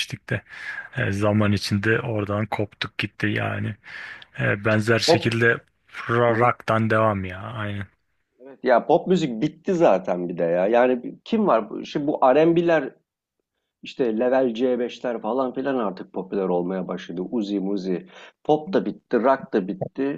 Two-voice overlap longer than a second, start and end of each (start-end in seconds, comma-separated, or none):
none